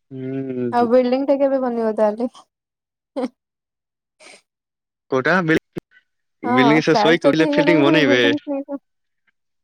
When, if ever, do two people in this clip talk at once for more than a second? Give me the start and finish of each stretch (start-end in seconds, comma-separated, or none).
6.4-8.2